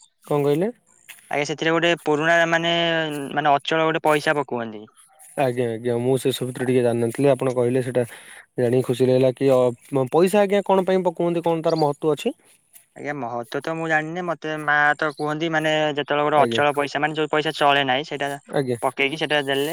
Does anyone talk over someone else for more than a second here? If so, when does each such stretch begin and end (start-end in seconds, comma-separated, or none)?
none